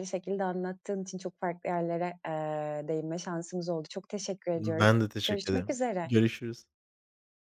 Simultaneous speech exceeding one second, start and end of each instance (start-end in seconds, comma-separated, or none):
4.5-6.1